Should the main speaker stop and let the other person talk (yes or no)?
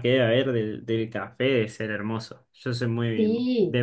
yes